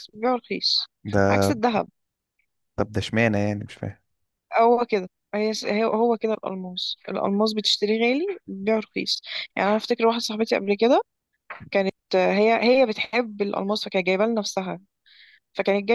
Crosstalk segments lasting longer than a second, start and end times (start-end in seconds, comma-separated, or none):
none